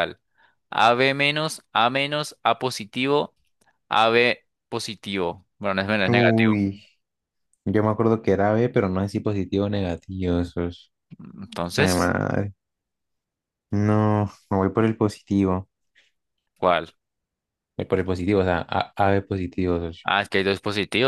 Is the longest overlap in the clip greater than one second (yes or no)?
no